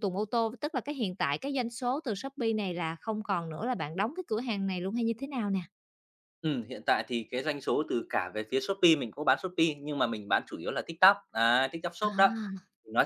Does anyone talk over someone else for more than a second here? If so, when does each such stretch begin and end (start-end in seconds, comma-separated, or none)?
none